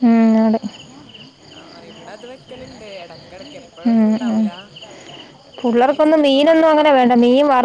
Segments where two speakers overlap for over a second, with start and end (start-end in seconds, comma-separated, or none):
5.6-7.0